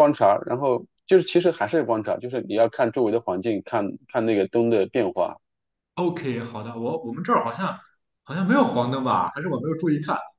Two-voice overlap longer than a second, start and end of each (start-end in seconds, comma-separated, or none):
none